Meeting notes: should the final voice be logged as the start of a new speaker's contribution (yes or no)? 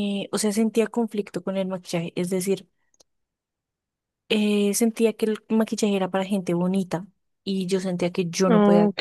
no